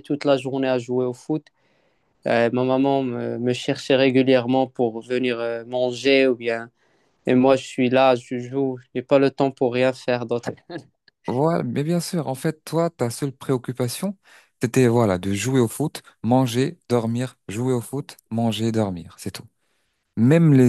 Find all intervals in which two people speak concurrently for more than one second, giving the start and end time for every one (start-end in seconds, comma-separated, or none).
none